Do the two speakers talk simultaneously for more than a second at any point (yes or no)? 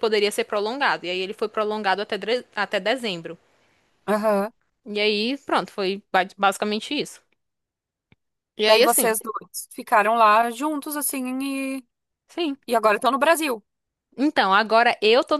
no